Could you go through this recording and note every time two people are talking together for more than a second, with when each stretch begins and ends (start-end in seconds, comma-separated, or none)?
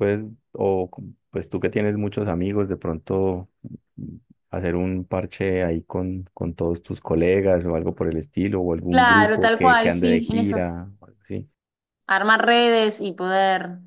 8.9-10.6